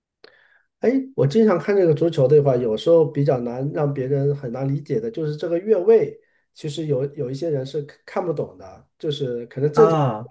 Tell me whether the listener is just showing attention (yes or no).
yes